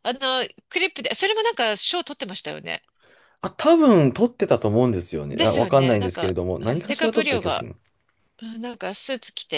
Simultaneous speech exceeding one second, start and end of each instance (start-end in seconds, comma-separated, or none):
5.3-7.7